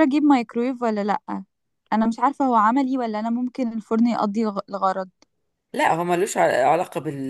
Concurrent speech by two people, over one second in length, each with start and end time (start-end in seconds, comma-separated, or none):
none